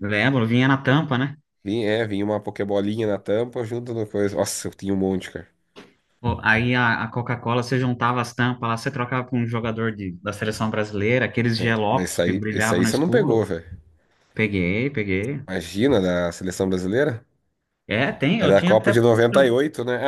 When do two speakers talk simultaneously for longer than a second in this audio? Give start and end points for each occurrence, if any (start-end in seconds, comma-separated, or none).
11.6-13.4